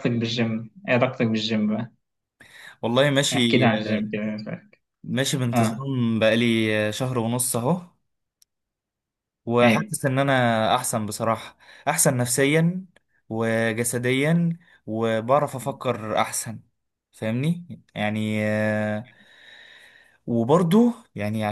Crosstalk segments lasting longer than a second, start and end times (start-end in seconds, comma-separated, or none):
none